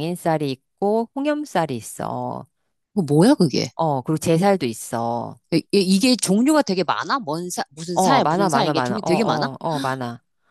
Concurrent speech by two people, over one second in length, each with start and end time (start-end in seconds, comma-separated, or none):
7.9-9.5